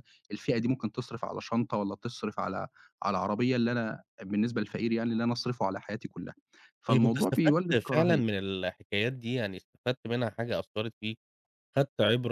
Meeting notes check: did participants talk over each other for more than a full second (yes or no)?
yes